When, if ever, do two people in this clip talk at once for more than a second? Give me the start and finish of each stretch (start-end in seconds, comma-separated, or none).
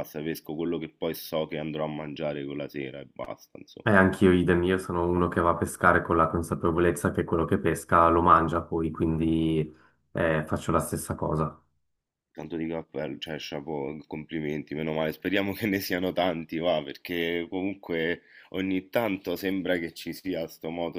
none